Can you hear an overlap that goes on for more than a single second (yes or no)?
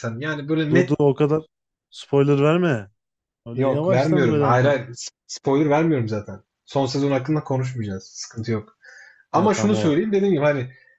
yes